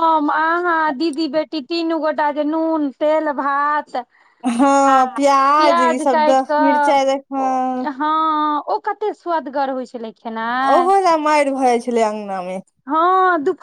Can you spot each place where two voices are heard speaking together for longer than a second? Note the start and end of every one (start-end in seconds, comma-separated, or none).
6.1-7.9